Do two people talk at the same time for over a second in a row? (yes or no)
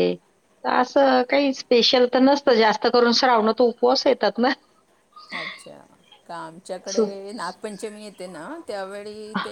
no